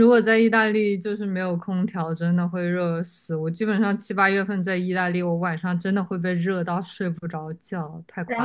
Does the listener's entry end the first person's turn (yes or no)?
yes